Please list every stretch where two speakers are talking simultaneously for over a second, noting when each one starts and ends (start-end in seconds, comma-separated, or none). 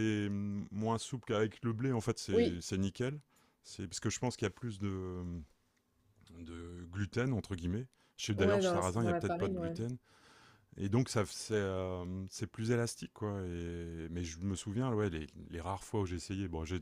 8.4-9.8